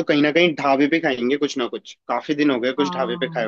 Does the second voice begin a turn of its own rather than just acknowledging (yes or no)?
yes